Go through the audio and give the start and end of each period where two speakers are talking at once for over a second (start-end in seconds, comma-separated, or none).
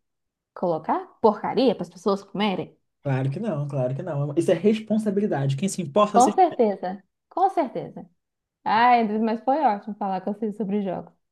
none